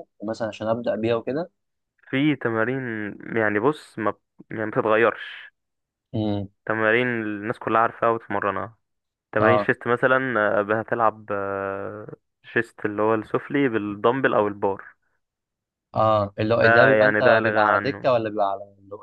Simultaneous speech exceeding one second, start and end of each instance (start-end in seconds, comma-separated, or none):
16.6-18.1